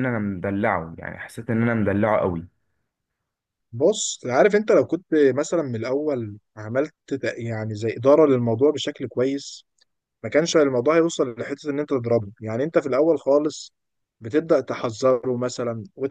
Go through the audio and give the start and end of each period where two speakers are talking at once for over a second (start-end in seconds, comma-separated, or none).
none